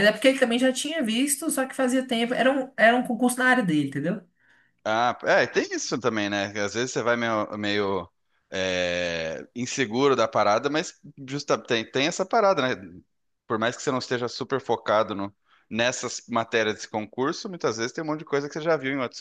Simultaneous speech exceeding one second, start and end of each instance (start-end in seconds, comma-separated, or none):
none